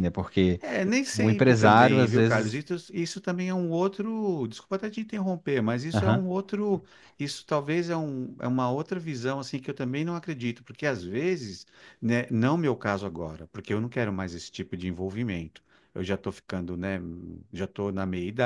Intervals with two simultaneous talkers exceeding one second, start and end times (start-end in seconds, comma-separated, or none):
1.1-2.6